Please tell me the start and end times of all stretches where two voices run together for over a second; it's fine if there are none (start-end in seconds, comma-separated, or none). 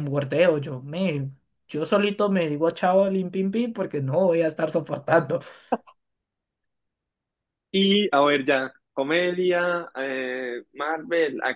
none